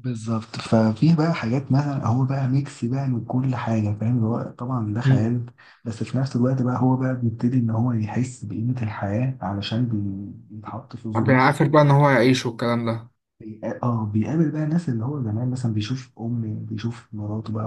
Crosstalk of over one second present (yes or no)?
no